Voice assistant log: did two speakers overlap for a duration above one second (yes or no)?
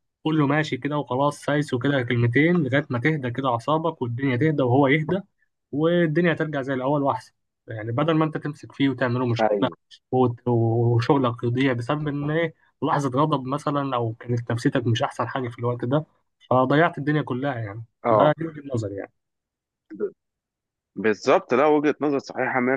no